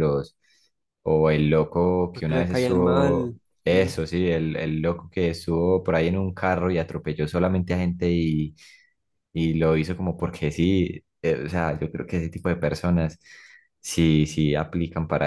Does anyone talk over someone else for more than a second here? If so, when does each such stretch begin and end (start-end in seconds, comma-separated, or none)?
2.1-3.9